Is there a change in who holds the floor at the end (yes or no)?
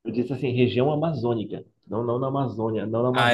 yes